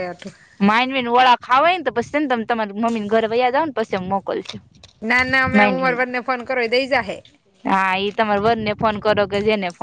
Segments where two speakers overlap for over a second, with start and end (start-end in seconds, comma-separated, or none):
none